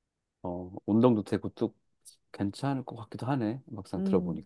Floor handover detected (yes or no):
yes